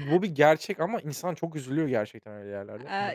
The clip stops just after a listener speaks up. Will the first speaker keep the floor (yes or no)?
no